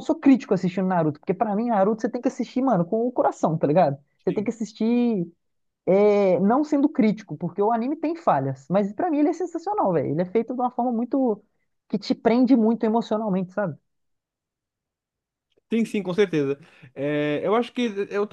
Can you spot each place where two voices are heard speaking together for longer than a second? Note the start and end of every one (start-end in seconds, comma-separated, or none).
none